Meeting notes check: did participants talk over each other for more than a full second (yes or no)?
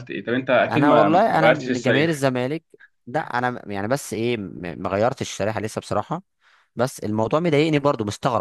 yes